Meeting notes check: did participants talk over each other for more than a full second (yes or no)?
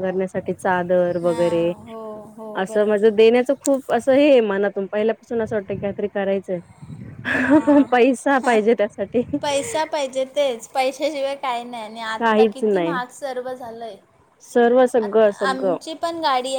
no